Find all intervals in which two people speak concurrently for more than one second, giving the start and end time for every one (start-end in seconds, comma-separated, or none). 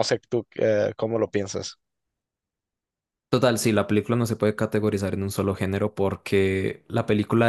none